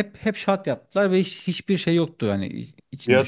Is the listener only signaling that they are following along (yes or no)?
no